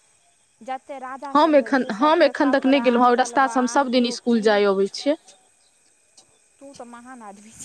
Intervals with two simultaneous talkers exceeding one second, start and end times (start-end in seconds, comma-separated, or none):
1.4-4.5